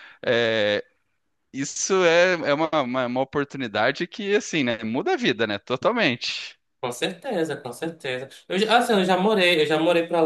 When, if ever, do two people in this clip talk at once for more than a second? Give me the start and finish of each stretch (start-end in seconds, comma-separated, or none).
none